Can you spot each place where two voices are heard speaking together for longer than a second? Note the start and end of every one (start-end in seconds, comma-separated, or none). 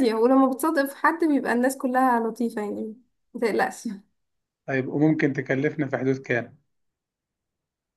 none